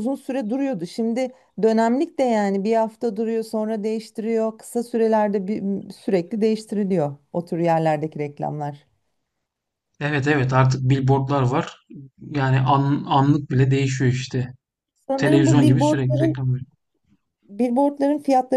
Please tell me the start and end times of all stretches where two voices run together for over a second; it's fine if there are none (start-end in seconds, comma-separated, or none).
15.2-16.4